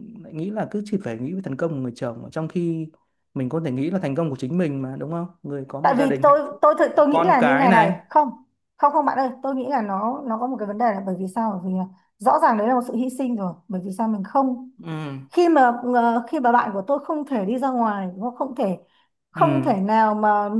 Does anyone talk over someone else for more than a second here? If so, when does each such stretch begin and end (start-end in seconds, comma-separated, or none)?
5.8-7.9